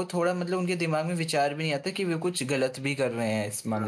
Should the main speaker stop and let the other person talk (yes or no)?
yes